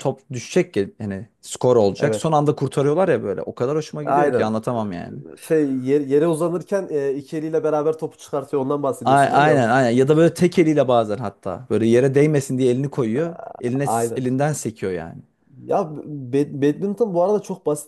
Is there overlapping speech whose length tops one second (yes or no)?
yes